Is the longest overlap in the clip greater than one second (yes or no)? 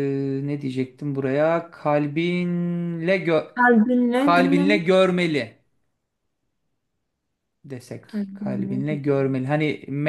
yes